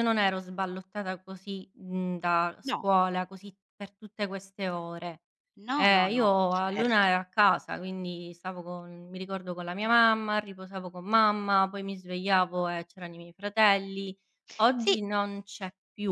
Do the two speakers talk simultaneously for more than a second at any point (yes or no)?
yes